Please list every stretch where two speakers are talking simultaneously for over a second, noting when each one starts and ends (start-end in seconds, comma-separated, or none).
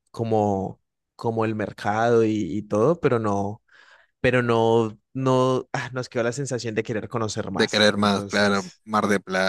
7.5-8.8